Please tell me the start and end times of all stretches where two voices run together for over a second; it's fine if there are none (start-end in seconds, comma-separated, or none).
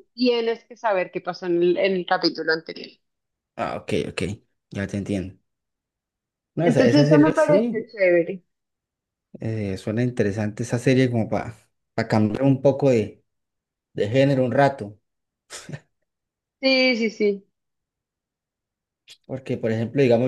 6.6-7.9